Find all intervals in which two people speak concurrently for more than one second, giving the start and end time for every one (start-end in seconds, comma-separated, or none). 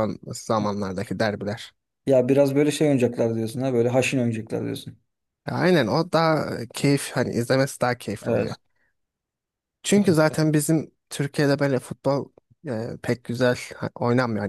none